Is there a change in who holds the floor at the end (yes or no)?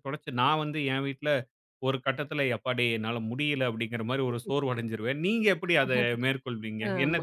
yes